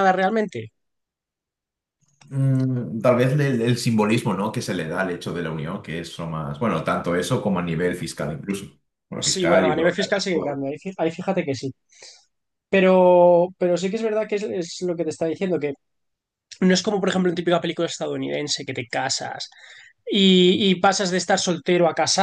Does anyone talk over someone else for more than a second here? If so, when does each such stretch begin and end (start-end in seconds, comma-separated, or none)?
9.2-10.6